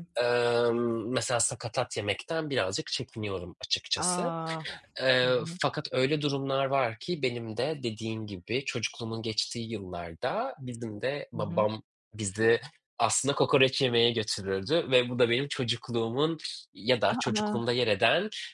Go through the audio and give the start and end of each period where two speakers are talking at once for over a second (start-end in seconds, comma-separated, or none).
none